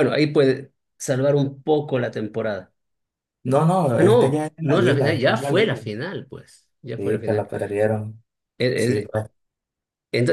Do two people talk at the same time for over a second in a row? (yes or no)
yes